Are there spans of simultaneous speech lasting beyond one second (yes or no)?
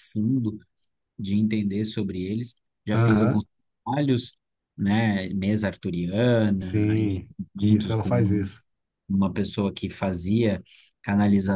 yes